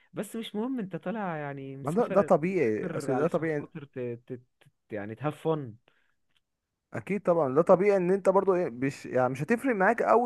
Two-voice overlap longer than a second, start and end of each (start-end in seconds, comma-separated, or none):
1.8-3.7